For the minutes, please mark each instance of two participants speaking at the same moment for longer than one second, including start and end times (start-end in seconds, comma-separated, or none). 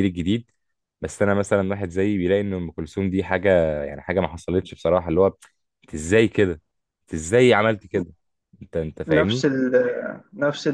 none